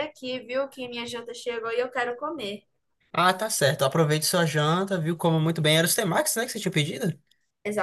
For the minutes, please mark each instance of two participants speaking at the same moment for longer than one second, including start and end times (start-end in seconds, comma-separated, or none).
none